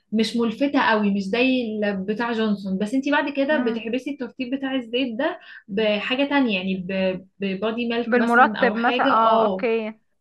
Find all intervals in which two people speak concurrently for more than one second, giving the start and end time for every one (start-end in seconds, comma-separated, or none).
8.1-9.7